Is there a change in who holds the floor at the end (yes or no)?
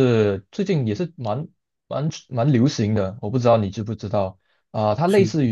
no